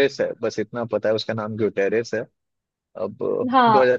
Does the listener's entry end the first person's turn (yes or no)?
yes